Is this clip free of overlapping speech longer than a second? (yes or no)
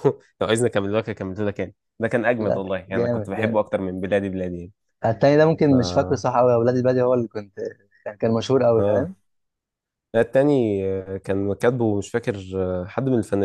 no